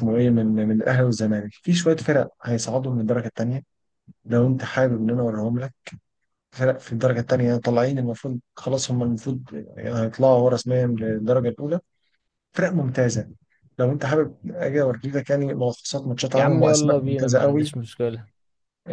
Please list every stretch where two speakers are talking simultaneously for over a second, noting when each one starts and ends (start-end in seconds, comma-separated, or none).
16.4-17.7